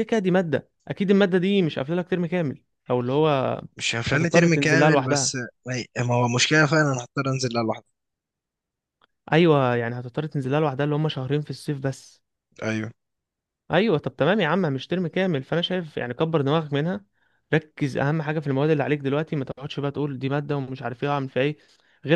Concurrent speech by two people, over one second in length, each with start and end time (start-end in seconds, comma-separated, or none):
4.1-5.4